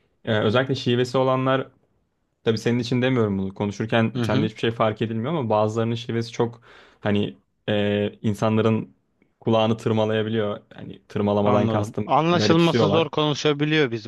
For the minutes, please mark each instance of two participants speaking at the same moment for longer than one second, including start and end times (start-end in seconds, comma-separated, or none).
11.4-13.1